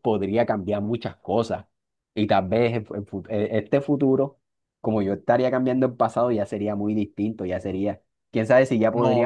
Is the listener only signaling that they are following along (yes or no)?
no